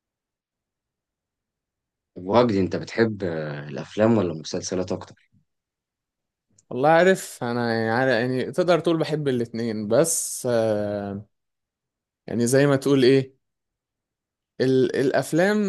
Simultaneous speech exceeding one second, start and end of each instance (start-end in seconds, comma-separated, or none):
none